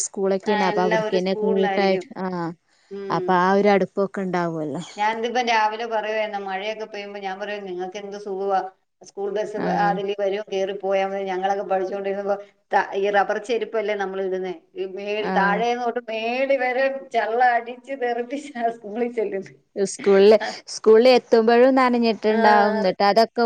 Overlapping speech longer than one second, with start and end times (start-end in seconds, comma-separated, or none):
0.5-2.0